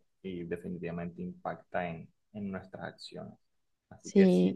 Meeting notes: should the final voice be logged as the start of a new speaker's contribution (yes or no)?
no